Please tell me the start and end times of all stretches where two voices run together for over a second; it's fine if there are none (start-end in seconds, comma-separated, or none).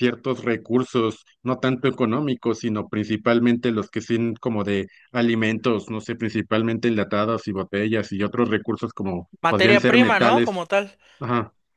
9.4-10.6